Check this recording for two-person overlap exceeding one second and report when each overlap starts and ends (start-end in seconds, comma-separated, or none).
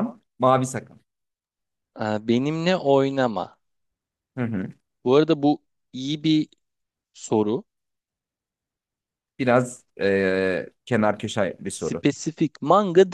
none